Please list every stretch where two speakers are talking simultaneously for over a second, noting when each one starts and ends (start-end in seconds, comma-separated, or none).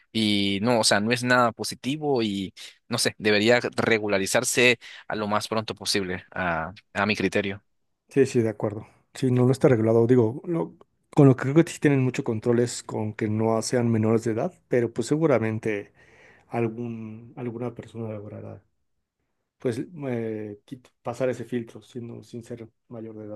none